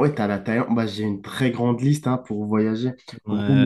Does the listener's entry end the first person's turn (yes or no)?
yes